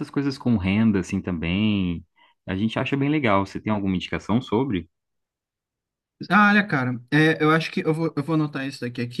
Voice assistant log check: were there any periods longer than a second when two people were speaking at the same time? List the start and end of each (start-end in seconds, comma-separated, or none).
none